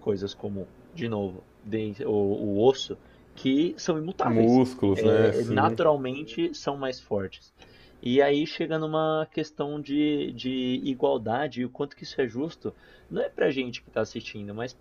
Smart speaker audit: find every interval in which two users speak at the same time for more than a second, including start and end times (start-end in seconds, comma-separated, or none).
4.2-5.8